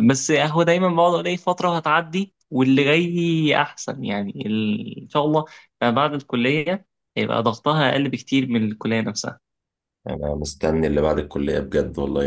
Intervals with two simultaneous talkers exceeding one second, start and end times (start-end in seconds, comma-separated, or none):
none